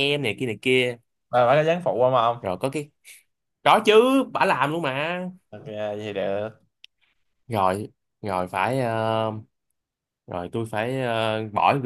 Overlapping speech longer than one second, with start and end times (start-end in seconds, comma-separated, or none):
none